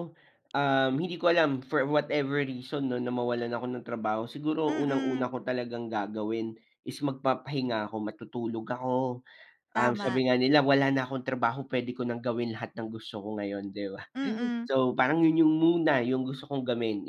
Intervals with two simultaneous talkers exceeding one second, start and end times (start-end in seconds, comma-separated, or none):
none